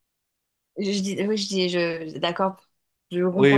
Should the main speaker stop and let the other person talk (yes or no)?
yes